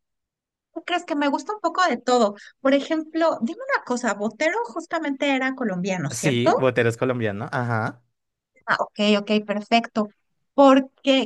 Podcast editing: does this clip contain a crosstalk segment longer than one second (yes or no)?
no